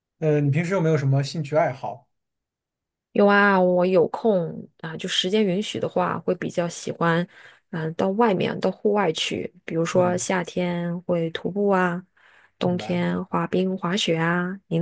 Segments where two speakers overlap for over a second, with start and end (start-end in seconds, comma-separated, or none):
none